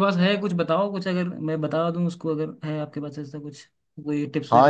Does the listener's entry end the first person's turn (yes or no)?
yes